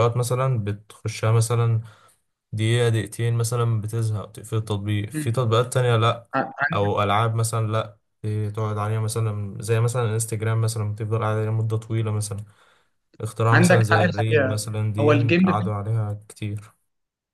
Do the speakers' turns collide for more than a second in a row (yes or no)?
yes